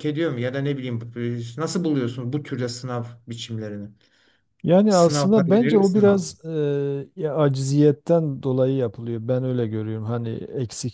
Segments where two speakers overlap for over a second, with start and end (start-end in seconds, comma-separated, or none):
4.9-6.2